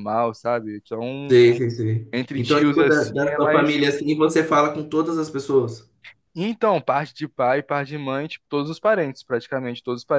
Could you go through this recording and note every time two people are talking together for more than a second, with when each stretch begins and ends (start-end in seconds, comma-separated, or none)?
2.1-3.8